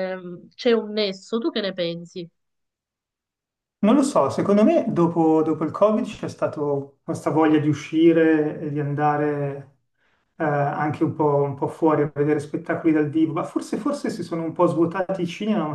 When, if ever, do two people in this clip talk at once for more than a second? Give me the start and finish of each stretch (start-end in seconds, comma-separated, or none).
none